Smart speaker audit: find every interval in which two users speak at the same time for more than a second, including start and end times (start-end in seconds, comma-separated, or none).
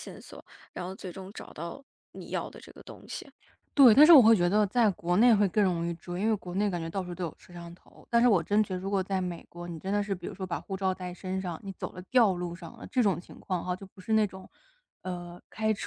none